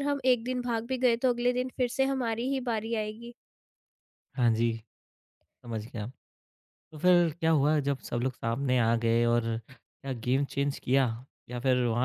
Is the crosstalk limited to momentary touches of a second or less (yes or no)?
yes